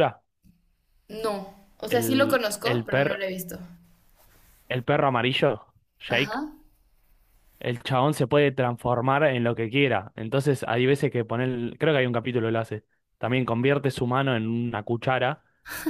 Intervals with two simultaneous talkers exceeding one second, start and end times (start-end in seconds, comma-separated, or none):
1.9-3.2